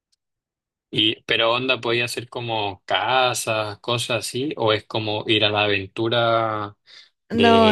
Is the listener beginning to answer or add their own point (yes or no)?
yes